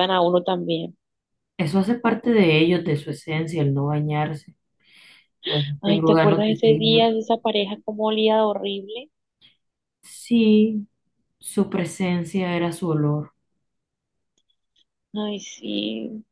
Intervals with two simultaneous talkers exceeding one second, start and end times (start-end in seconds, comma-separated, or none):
5.8-7.0